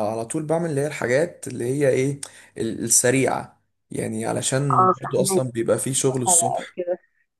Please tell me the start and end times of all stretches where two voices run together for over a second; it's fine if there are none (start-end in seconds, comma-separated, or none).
4.7-6.6